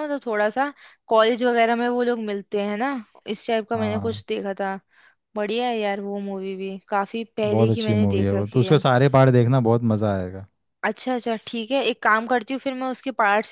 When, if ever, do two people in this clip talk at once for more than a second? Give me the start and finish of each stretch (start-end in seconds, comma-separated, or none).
7.5-8.8